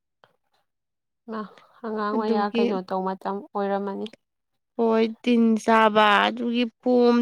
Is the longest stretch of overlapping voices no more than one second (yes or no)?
yes